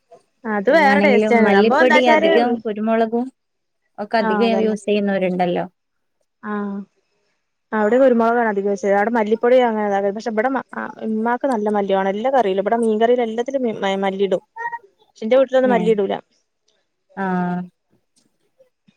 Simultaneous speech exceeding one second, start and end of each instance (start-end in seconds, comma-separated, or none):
0.7-2.3